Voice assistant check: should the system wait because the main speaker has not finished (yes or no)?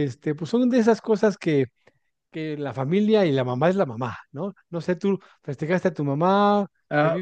no